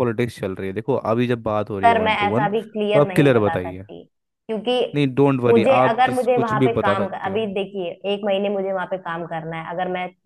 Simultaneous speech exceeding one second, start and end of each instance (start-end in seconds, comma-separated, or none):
1.8-3.9, 5.5-7.4